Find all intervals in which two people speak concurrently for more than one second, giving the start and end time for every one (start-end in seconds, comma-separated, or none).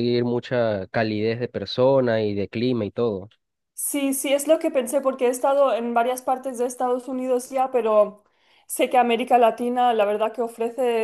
none